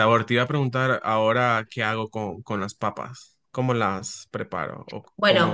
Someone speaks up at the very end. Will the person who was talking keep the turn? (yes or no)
no